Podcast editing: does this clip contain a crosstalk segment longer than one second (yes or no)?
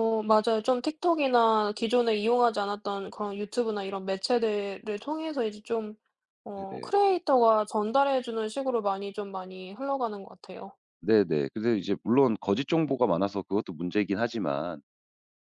no